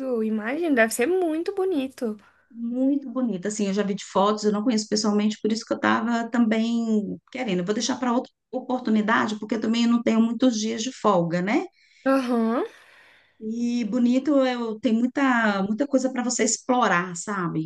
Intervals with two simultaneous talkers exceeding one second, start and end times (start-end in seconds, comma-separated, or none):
none